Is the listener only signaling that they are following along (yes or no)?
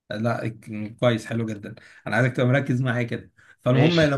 yes